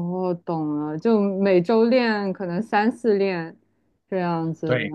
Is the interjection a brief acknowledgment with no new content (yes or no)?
no